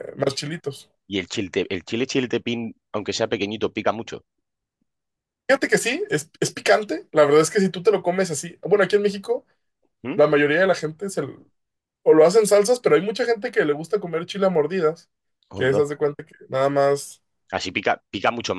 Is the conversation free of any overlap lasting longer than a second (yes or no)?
yes